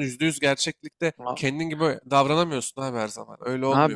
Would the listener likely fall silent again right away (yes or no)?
no